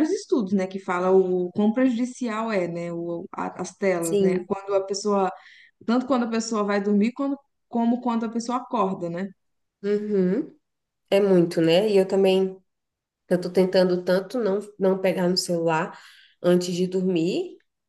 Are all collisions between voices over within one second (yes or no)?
yes